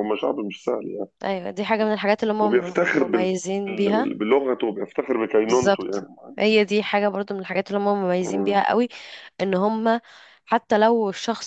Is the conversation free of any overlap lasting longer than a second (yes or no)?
no